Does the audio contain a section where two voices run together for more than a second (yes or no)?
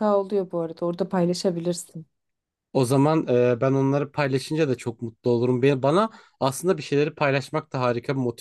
no